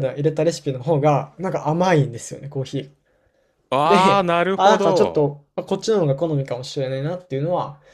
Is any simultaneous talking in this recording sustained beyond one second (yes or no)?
yes